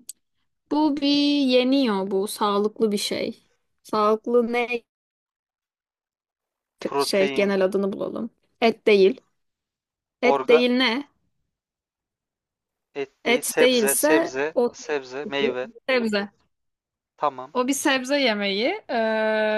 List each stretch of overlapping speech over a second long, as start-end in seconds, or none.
13.2-14.7